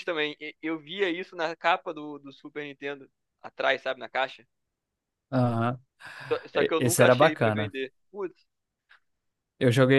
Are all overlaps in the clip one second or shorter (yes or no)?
no